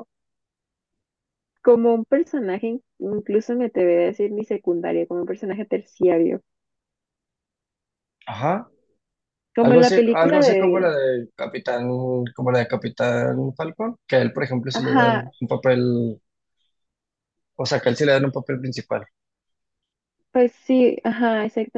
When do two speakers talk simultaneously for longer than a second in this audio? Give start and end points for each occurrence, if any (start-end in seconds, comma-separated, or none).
9.6-11.0